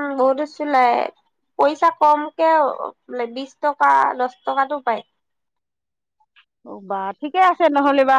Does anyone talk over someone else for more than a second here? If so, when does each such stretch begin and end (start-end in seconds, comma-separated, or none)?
none